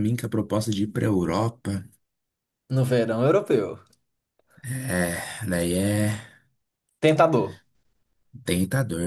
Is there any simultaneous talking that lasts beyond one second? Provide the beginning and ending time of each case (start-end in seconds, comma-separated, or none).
none